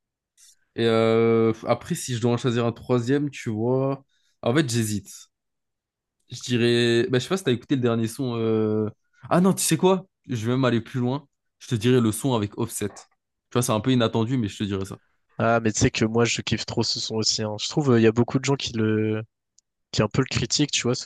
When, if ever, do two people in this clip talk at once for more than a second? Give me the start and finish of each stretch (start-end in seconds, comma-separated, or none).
none